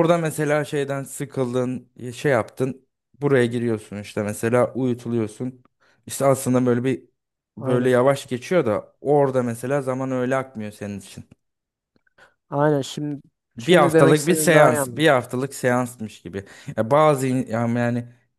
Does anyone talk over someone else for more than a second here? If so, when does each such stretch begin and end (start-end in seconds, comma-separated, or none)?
13.6-15.1